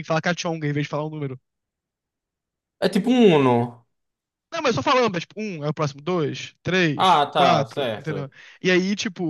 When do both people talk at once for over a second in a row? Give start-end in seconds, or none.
7.0-8.3